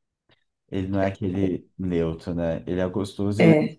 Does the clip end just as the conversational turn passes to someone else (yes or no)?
no